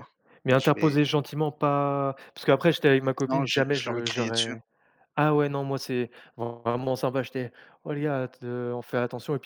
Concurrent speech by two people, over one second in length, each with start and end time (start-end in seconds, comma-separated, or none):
3.3-4.5